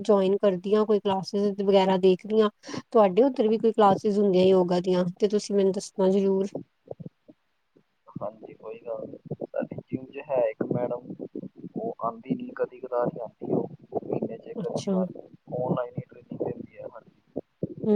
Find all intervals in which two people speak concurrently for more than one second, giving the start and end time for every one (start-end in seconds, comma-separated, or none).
none